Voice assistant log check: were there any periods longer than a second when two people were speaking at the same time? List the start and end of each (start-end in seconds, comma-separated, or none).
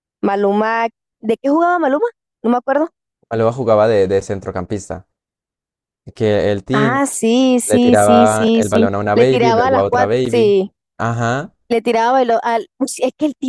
7.7-10.6